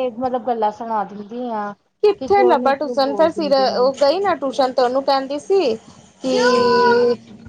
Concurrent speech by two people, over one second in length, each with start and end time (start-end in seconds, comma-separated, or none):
2.2-3.9